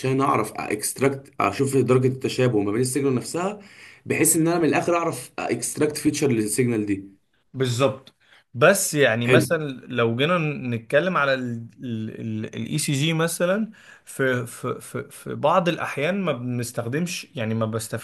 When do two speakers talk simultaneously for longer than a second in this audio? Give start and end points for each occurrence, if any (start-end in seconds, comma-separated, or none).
none